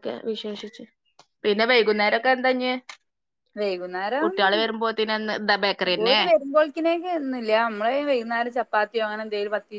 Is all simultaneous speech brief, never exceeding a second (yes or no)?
yes